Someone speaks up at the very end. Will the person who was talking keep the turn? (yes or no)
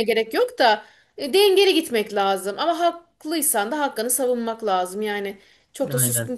yes